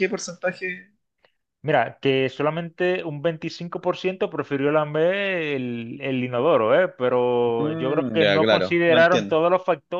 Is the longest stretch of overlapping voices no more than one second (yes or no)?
no